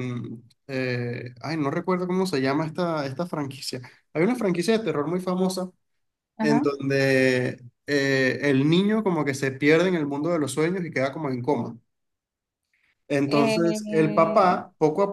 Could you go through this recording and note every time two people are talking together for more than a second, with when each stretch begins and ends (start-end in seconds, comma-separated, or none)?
13.3-14.6